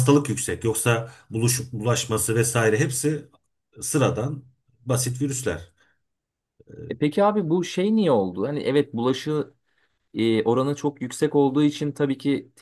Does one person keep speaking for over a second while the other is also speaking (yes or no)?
no